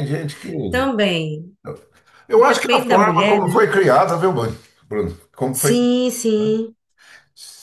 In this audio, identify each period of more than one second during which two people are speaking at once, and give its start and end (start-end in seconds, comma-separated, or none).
2.3-3.7